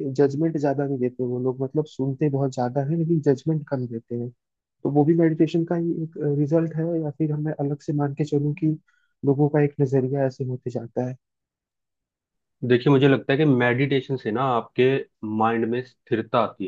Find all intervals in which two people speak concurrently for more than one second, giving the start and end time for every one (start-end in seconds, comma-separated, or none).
none